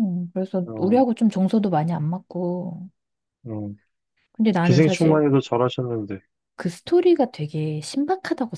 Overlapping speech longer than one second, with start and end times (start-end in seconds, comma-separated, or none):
none